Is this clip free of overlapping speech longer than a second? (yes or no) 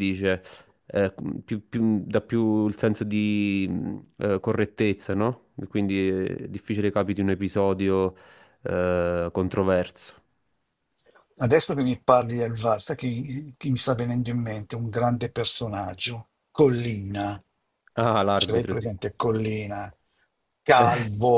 yes